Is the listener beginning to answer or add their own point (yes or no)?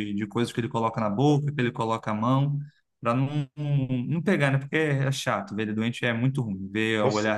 no